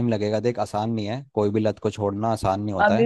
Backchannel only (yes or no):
no